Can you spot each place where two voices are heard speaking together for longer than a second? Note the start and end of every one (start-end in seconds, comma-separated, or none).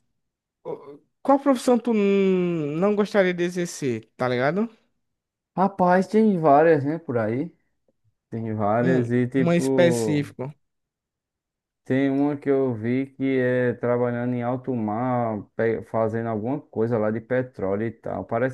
8.8-10.3